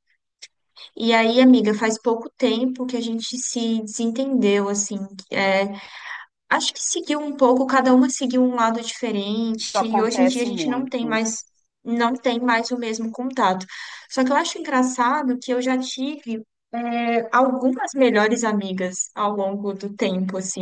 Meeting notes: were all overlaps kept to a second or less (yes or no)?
no